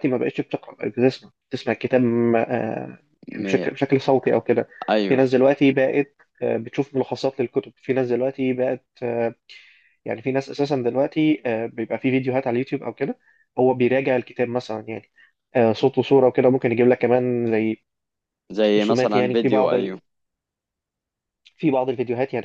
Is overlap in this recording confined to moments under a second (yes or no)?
no